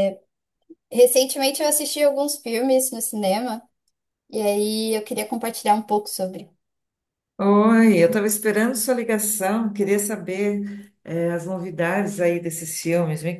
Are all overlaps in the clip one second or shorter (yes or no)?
yes